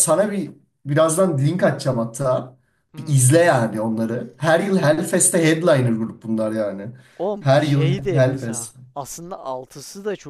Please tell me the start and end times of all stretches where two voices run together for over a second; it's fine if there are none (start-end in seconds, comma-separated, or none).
7.4-8.8